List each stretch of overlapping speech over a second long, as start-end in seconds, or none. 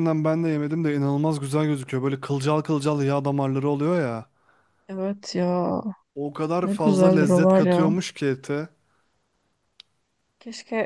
6.6-7.9